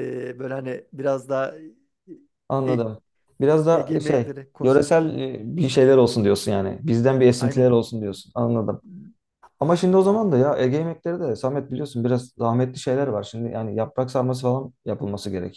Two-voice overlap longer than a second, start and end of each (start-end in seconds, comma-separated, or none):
3.7-5.1